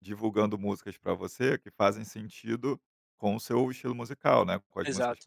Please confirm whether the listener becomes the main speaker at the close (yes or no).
no